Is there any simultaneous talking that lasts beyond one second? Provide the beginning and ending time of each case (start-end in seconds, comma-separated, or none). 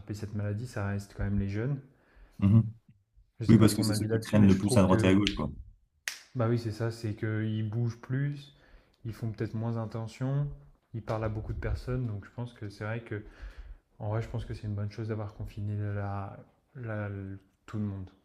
3.5-5.1